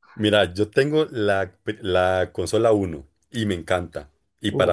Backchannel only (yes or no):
yes